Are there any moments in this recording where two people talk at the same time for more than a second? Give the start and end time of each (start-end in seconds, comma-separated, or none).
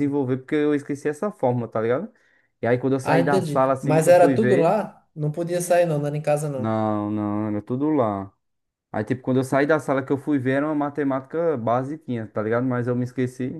3.0-4.8